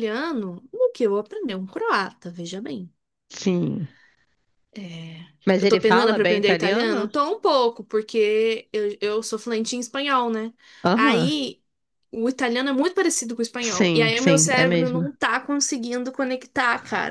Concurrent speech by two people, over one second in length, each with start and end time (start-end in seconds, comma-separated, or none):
5.6-7.1, 13.6-15.1